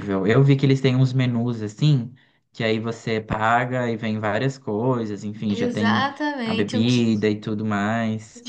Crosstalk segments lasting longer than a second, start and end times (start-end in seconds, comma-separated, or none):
5.5-7.1